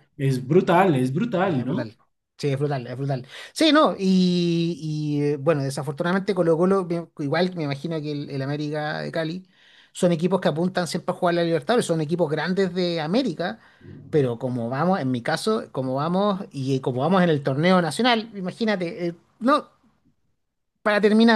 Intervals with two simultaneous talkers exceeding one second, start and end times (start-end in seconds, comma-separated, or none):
none